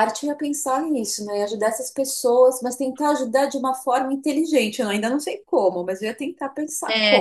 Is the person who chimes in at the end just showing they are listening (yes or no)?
no